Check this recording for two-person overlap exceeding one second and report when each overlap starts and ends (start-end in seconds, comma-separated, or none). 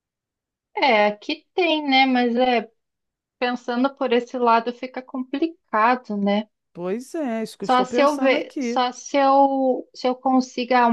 7.6-8.8